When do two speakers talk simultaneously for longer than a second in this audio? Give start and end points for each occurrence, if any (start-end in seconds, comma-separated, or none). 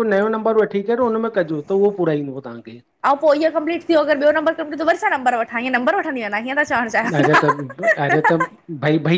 none